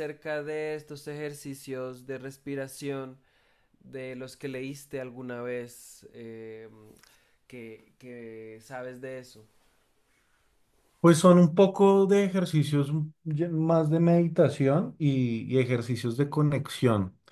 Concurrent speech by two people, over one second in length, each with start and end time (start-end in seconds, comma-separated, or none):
none